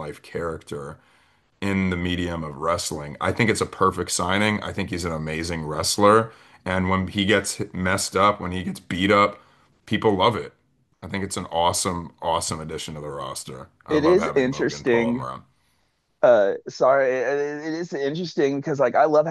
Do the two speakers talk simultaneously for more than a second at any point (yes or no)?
yes